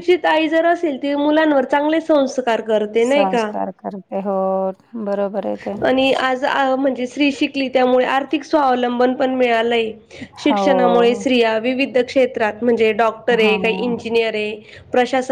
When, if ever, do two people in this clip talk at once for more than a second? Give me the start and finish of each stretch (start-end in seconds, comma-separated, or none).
none